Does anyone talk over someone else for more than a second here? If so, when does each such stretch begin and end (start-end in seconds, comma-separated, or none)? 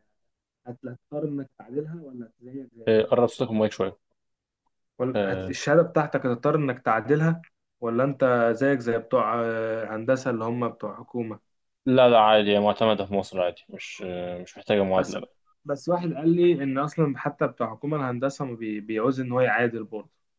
none